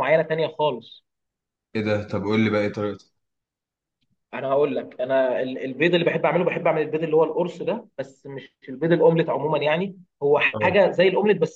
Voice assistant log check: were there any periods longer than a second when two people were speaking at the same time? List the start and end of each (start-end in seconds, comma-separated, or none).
none